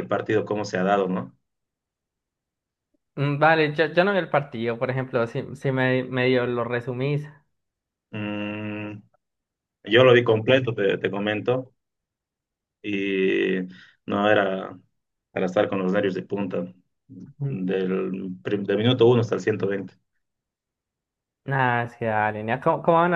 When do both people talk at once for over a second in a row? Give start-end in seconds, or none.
none